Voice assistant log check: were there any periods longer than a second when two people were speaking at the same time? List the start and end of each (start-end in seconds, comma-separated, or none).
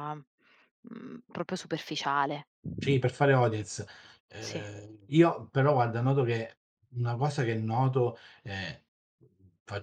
none